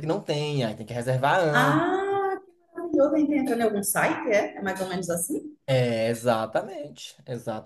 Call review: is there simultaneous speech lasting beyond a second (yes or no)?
no